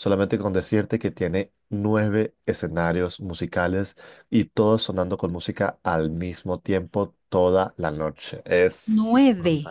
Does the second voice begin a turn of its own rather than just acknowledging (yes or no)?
yes